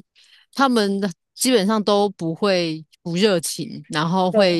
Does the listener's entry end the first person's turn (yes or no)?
no